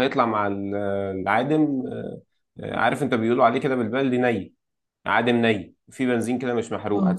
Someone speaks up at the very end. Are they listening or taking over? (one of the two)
listening